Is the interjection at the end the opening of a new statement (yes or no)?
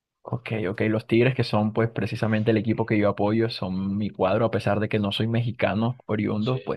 no